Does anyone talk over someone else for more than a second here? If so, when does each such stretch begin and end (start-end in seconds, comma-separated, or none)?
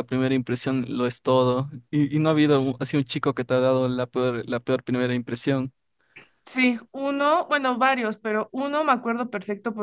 none